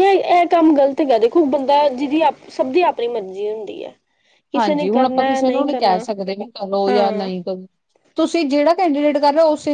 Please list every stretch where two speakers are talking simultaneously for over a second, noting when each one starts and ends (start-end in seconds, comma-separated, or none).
4.6-6.0